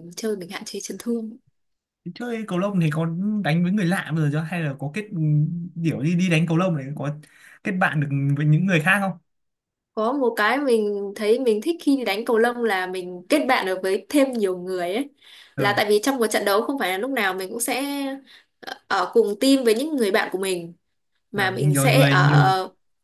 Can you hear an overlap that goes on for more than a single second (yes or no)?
yes